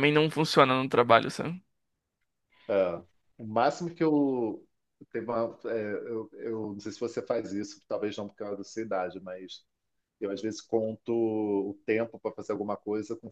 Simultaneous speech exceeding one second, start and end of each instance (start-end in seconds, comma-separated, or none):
none